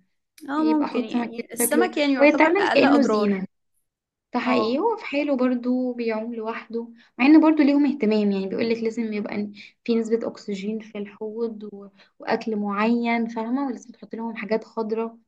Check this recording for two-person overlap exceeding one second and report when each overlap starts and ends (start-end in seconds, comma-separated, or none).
0.6-3.3